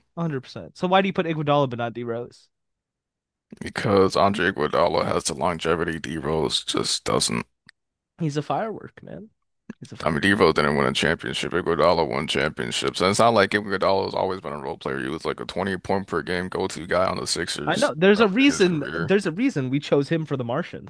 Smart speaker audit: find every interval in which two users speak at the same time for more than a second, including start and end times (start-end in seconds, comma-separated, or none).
17.7-19.1